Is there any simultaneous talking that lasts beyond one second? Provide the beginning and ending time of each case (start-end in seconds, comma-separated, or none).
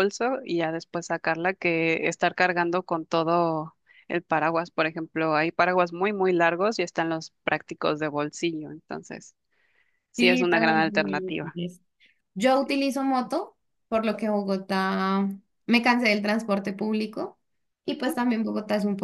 10.2-11.6